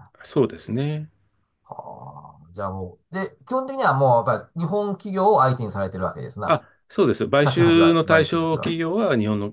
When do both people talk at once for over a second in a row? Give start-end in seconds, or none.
7.4-8.8